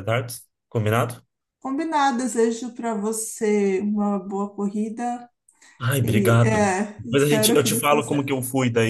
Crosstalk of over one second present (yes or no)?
yes